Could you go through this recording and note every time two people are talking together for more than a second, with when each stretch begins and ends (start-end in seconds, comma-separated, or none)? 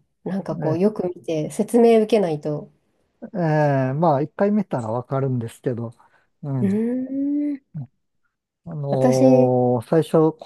none